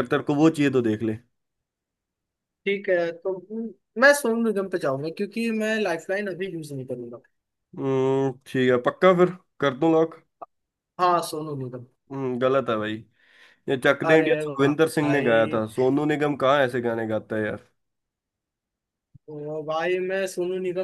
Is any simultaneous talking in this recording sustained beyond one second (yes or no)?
yes